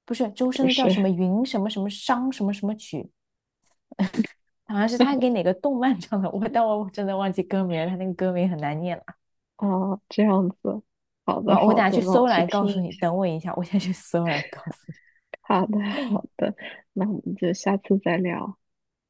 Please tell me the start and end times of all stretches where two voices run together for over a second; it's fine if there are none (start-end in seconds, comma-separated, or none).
11.4-13.1